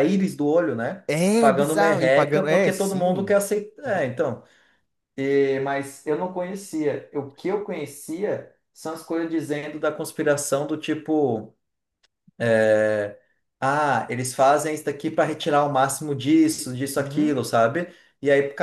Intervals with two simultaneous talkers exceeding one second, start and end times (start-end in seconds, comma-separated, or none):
1.1-3.3